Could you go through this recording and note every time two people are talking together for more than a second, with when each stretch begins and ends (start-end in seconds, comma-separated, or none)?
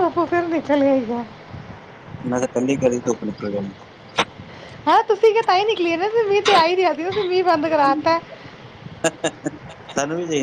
none